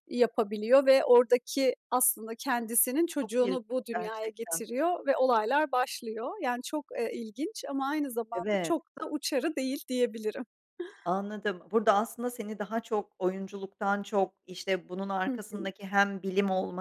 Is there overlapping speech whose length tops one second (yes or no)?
yes